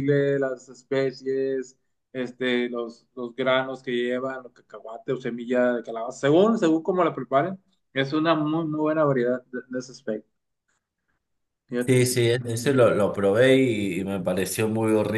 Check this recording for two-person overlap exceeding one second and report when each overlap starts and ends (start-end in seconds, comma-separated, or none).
none